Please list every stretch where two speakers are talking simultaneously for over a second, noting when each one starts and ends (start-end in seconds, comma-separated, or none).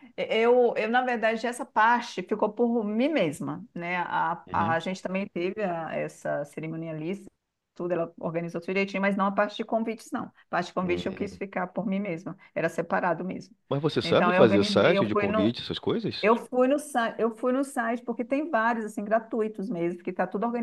14.0-15.5